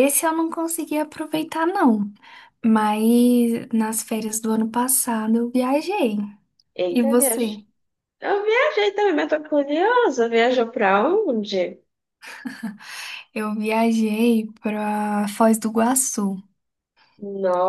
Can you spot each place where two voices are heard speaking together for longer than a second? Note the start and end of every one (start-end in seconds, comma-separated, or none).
none